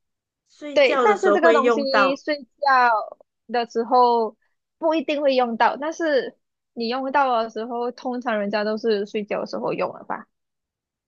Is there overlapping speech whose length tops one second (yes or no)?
yes